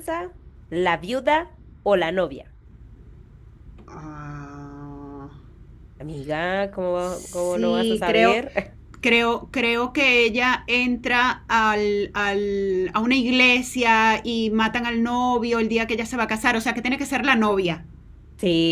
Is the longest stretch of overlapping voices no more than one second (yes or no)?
no